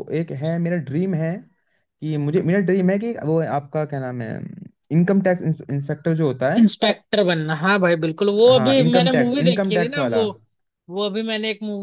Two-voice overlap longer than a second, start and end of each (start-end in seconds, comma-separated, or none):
8.6-10.2